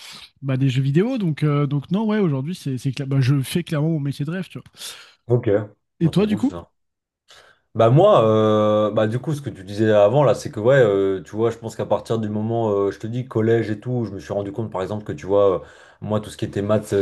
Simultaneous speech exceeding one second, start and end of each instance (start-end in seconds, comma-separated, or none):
none